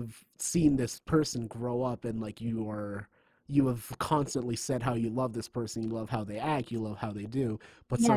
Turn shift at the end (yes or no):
yes